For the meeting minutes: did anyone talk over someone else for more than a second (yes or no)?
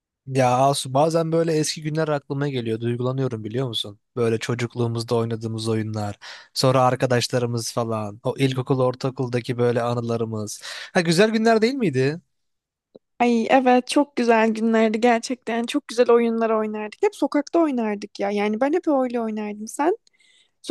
no